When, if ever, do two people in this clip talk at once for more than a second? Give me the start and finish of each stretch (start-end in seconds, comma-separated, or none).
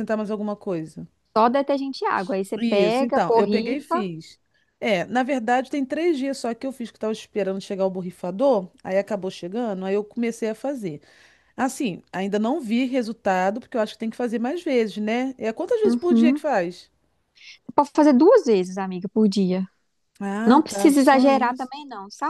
2.6-4.1, 20.4-21.7